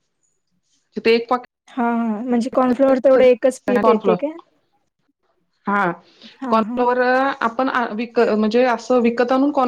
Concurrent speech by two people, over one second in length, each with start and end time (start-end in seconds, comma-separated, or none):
none